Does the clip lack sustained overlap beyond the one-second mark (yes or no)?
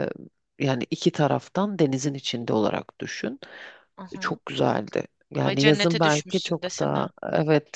no